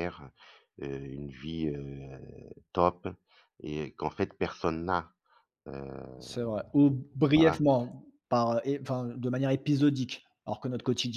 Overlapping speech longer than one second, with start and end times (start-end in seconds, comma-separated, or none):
none